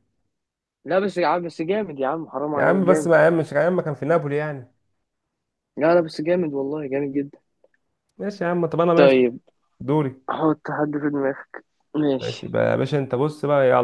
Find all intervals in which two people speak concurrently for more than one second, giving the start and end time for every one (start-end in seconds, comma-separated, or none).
none